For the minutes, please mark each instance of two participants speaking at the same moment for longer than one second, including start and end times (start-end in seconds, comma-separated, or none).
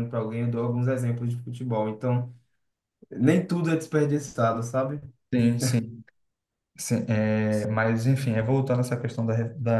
none